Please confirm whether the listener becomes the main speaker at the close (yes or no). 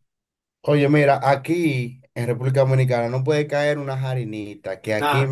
no